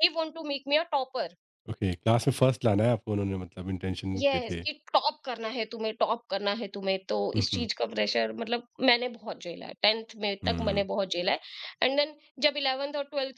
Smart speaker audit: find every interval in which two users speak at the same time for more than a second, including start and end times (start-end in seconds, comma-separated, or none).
none